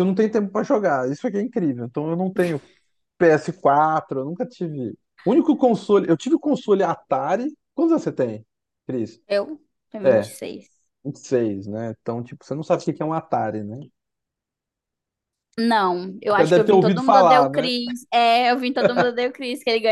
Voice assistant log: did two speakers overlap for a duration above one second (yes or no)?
yes